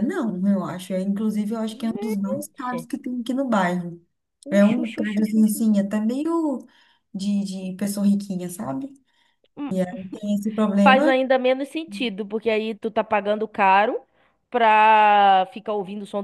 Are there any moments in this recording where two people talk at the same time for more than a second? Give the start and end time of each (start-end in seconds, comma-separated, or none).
4.5-5.8